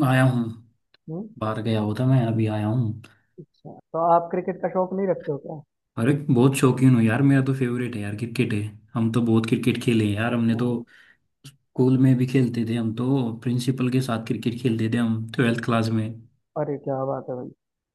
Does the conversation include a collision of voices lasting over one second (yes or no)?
no